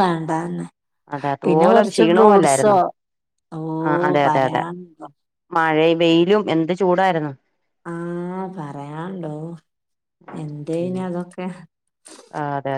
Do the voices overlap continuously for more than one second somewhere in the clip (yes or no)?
yes